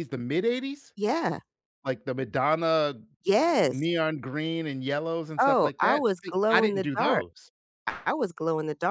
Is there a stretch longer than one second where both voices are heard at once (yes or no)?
yes